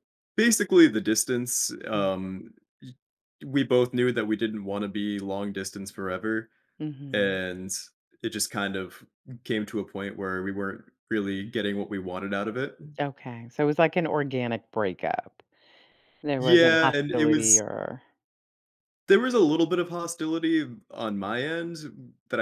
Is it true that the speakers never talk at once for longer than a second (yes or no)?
no